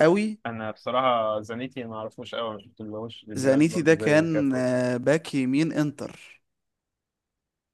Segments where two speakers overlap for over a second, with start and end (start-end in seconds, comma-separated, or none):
3.4-4.6